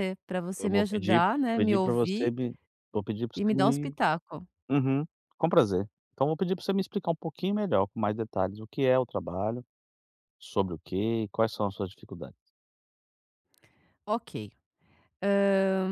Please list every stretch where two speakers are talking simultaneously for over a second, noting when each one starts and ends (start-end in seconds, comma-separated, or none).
0.6-2.3